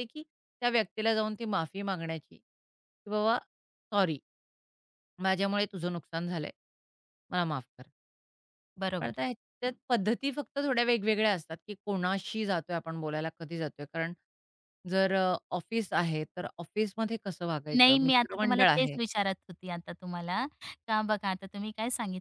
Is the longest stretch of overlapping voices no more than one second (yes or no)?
no